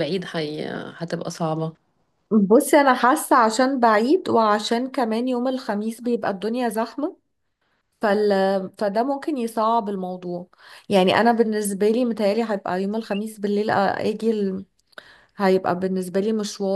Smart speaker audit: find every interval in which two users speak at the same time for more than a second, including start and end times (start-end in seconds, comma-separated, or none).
none